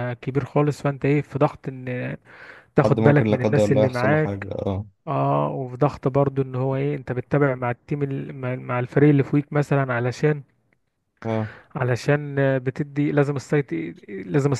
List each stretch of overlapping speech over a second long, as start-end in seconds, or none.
2.8-4.5